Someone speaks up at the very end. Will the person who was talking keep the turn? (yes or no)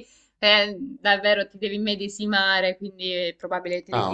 no